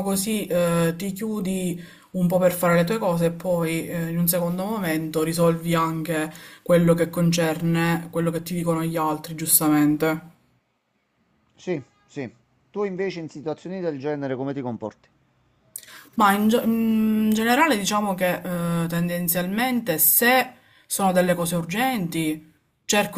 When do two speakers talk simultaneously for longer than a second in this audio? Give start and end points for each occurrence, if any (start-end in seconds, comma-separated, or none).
none